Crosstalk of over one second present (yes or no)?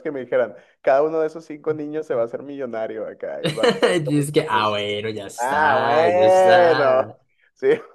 yes